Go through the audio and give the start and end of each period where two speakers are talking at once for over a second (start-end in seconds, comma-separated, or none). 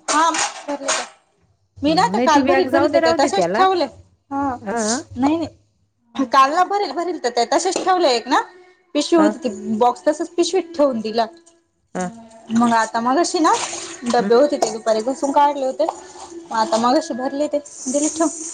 1.9-3.6